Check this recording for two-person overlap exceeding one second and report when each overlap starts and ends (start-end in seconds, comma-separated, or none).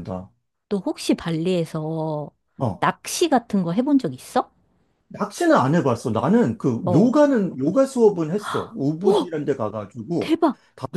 none